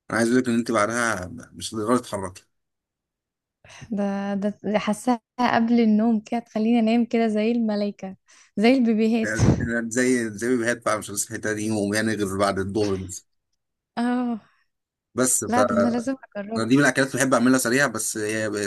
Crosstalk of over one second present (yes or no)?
no